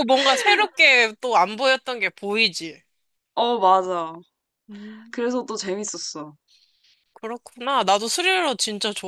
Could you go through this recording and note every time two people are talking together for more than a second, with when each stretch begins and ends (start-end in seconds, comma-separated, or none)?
none